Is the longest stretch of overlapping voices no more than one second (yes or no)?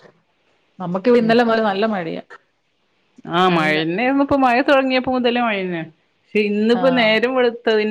yes